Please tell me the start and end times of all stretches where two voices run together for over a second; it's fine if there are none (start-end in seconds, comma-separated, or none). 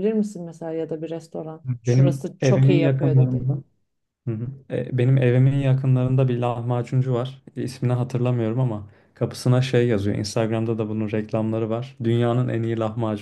1.6-3.5